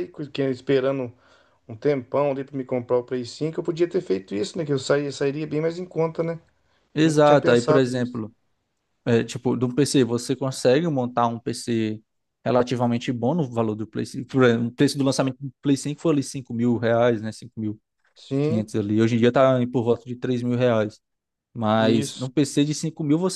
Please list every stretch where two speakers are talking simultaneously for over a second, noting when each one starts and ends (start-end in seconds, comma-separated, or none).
7.0-8.2